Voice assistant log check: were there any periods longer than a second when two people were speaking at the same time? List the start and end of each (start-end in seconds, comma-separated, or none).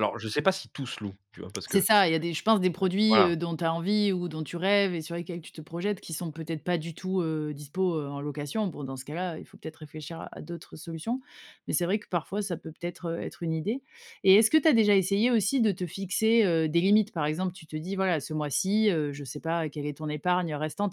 none